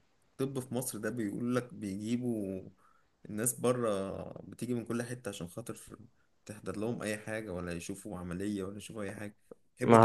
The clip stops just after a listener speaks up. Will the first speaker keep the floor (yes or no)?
no